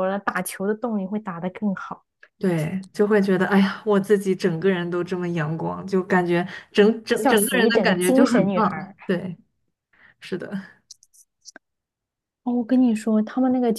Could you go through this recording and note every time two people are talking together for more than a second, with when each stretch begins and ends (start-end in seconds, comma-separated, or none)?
7.1-8.9